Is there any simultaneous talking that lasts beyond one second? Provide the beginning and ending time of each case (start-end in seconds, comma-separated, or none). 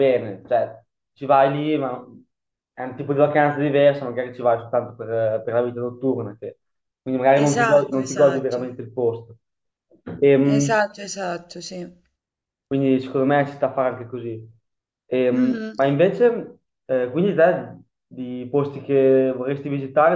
7.4-8.7